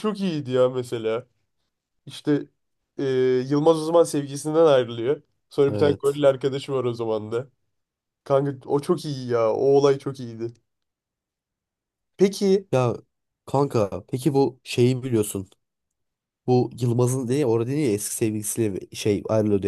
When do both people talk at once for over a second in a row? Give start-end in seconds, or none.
none